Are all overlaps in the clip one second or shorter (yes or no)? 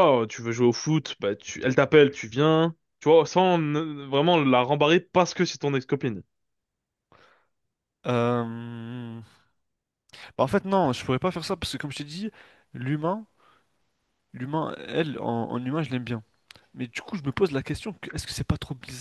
yes